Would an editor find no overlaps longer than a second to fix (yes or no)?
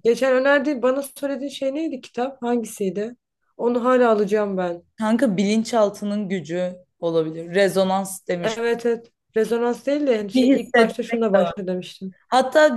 no